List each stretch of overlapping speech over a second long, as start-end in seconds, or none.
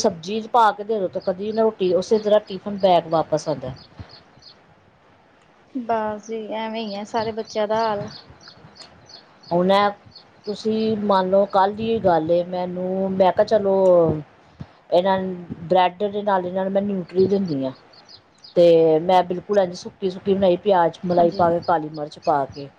none